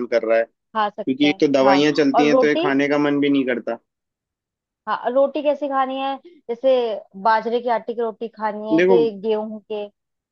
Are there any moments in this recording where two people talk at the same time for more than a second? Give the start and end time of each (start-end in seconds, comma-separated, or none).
0.8-2.7